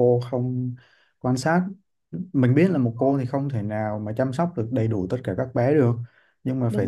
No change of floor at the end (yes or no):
yes